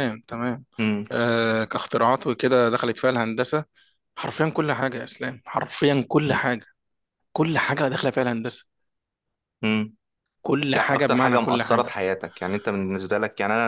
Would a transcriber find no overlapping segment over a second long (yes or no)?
no